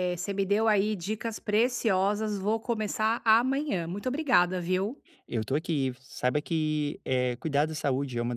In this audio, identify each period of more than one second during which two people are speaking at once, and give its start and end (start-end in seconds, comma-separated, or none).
none